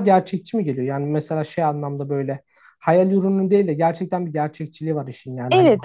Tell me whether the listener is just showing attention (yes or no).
no